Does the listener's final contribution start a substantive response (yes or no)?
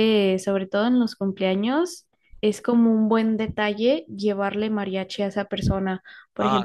yes